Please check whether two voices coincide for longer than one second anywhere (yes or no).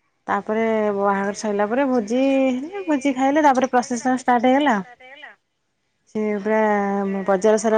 no